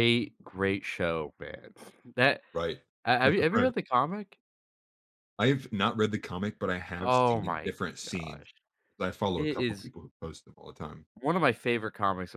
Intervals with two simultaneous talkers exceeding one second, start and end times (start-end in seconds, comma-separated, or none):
7.0-8.5